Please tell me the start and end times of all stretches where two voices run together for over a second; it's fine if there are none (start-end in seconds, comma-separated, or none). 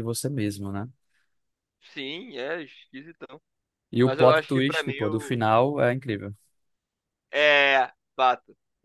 4.0-5.4